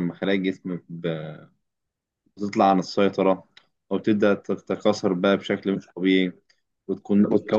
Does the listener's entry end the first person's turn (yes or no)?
no